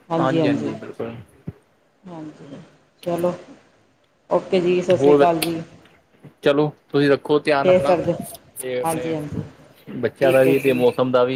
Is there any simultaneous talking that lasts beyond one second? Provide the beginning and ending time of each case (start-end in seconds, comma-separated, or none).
none